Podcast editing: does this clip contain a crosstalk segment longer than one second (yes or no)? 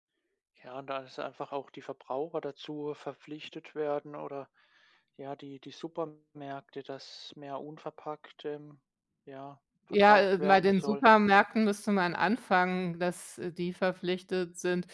yes